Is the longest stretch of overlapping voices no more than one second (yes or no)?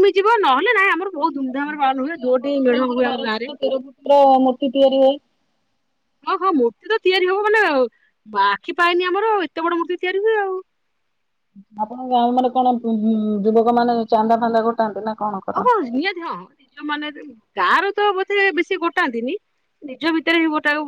no